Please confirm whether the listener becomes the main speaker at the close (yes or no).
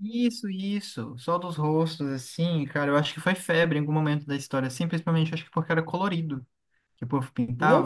yes